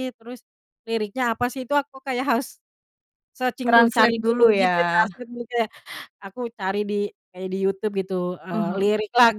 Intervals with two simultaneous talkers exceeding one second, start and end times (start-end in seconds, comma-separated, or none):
3.6-5.1